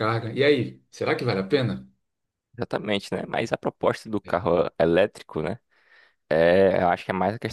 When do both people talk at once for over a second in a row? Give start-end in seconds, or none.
none